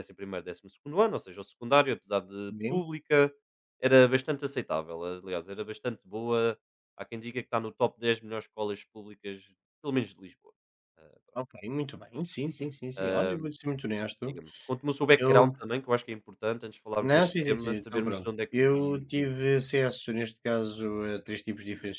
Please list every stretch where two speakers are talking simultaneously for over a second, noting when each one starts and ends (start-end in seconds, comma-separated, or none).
17.0-19.4